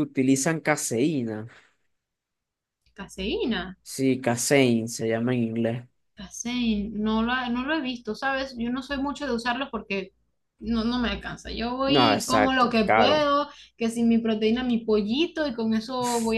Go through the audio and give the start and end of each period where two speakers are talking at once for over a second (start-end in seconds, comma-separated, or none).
11.8-13.2